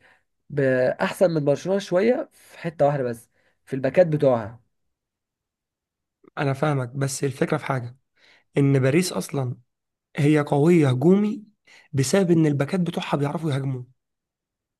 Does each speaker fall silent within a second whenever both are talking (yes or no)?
yes